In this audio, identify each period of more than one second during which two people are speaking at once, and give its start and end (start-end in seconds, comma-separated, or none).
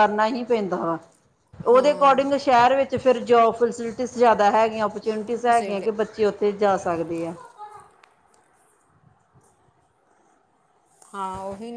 none